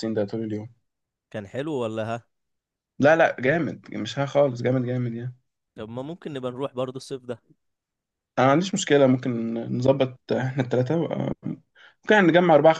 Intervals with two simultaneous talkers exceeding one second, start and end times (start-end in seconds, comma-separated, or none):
none